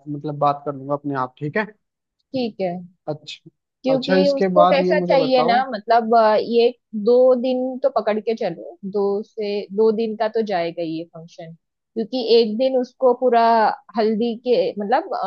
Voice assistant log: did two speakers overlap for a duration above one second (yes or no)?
yes